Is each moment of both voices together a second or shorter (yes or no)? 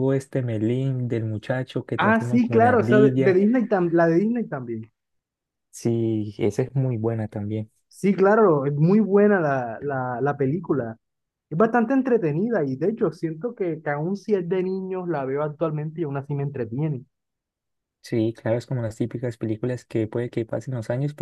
no